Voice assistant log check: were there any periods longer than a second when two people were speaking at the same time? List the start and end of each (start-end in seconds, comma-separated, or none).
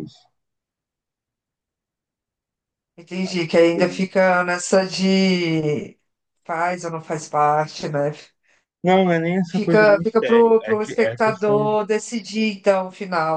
9.5-11.8